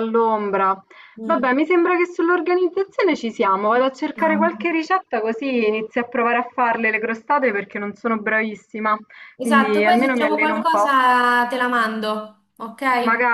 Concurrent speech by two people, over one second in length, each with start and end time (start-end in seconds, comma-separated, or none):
9.4-10.9